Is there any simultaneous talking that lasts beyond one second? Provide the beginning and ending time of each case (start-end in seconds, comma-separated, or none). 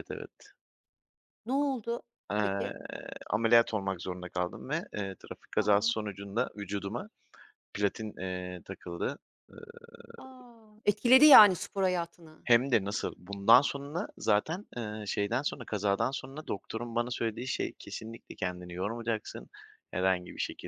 none